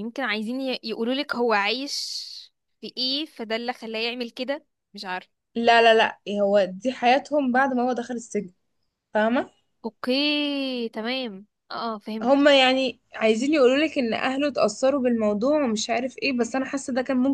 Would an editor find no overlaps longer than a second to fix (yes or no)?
yes